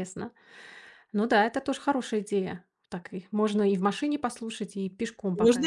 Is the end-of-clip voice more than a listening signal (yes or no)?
yes